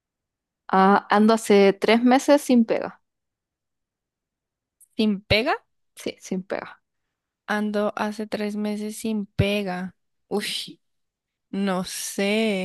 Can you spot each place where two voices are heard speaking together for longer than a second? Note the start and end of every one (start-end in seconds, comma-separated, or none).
none